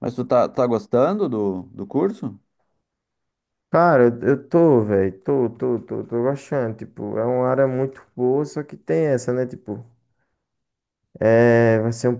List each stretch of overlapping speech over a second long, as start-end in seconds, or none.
none